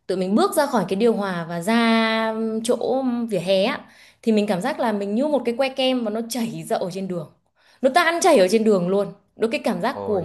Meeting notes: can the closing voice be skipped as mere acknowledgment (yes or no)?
yes